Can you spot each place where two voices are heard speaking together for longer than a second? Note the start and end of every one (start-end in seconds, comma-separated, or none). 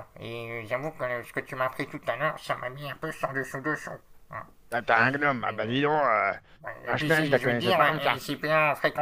6.9-8.2